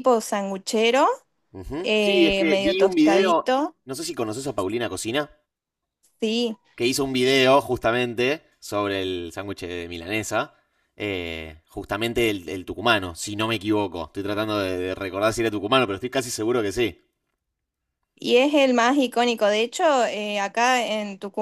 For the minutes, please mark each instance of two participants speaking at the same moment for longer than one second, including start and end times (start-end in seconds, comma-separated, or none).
1.8-3.8